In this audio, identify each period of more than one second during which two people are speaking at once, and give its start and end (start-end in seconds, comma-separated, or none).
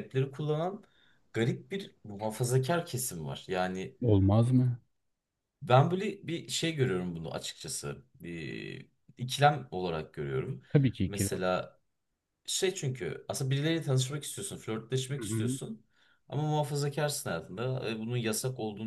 none